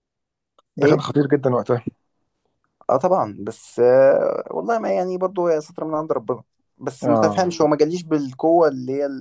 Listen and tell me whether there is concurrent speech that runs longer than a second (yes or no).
no